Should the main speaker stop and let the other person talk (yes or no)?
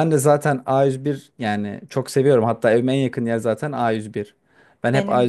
no